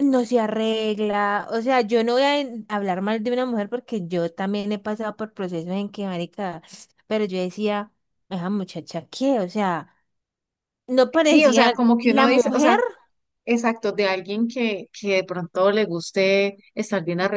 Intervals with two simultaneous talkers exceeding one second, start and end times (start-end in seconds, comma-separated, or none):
11.2-12.8